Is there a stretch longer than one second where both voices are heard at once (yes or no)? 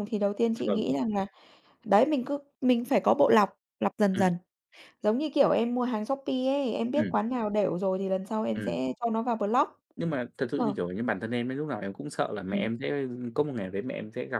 no